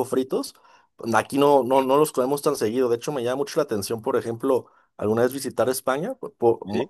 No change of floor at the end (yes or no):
yes